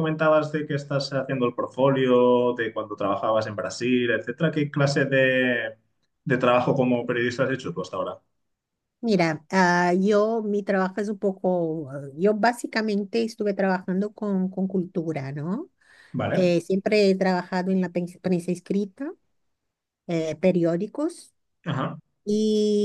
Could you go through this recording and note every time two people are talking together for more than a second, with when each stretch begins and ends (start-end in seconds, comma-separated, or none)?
none